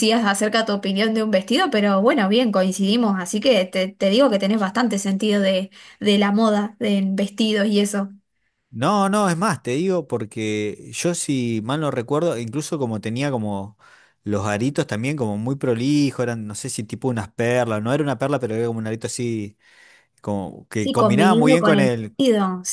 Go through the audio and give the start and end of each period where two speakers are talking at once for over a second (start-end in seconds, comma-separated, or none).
20.8-22.2